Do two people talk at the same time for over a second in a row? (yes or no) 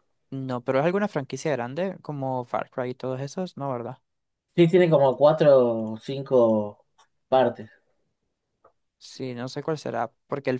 no